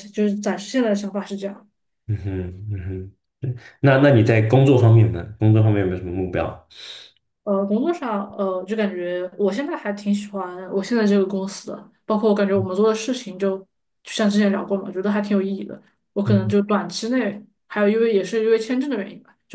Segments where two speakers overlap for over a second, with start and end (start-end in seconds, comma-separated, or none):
none